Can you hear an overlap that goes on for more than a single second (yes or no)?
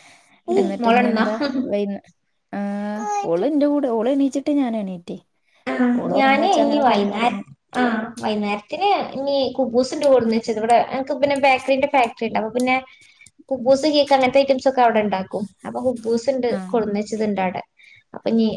no